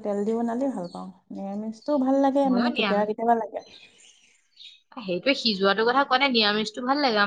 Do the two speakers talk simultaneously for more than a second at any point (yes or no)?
no